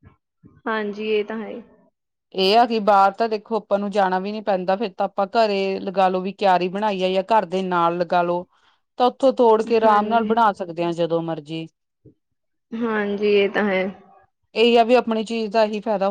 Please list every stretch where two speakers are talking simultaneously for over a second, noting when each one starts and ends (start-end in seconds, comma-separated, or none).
none